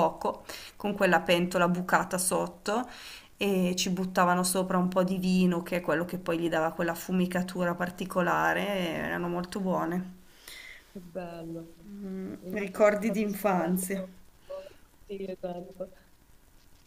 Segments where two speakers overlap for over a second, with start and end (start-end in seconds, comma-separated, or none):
12.4-14.0